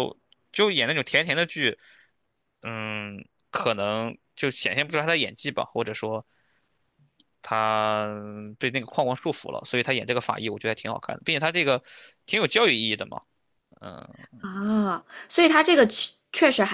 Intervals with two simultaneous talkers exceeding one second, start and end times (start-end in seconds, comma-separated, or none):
none